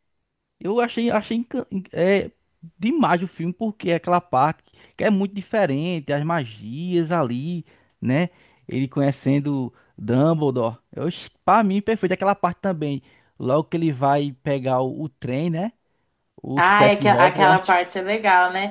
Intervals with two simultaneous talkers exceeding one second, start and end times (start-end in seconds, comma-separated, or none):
16.6-17.8